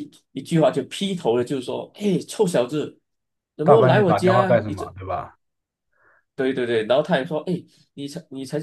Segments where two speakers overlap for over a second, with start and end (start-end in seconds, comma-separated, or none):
3.6-5.0